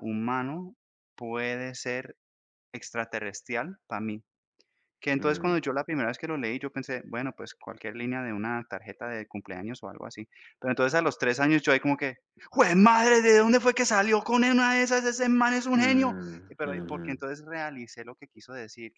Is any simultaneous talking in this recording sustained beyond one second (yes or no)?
yes